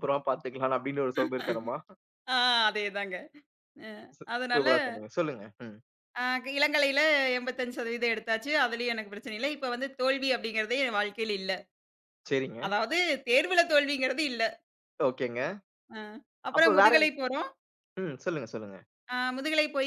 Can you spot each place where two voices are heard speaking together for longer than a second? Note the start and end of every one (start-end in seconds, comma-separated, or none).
none